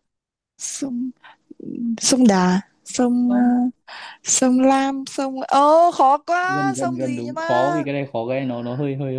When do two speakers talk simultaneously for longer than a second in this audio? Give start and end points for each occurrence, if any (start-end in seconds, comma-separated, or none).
6.4-7.8